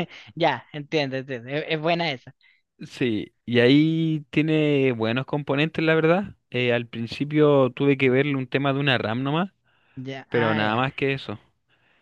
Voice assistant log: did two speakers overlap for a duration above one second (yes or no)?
no